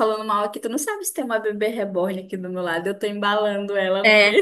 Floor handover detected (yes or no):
yes